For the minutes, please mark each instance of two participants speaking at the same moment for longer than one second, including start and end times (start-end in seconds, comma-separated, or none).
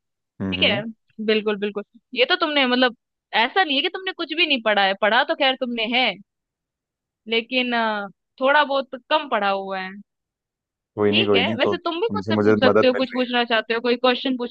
11.1-13.2